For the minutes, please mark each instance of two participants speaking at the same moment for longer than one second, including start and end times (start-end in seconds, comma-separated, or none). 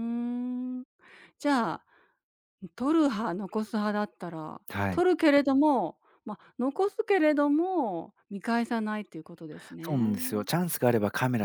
none